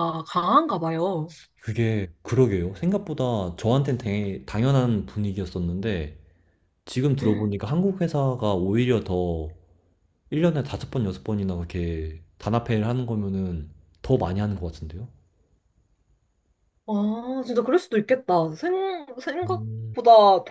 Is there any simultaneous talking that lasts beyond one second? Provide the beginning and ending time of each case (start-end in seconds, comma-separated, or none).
none